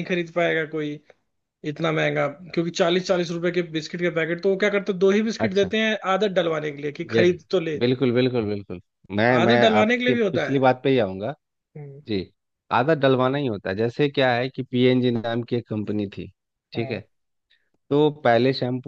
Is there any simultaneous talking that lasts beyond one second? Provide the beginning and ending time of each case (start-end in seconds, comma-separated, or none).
9.4-10.6